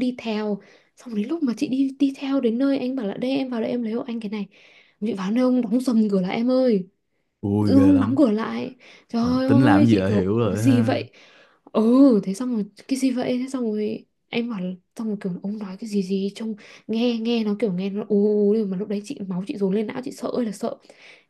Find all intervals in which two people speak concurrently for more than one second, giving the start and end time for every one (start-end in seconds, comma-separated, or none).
9.2-11.0